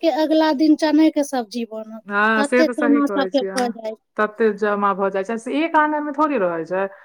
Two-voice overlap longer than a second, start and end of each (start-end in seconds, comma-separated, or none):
2.1-3.8